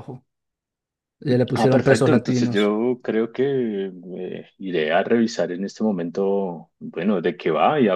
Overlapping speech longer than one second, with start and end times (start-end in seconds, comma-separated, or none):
1.5-2.8